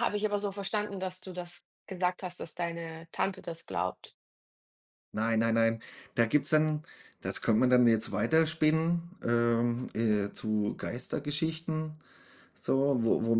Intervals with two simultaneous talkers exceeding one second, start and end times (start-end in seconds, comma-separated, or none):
none